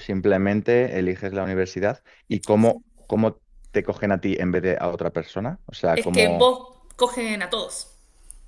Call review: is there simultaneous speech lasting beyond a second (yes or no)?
no